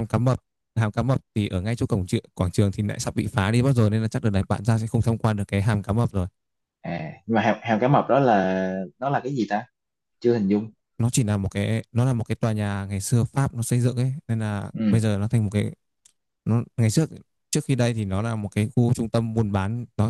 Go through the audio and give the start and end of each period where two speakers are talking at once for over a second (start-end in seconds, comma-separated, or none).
none